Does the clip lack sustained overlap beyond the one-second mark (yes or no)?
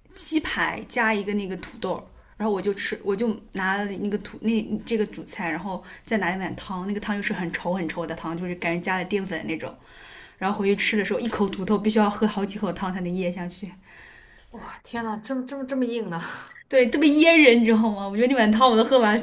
yes